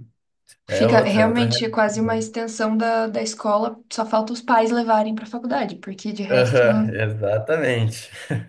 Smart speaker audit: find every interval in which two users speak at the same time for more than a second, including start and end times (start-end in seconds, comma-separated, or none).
0.7-2.2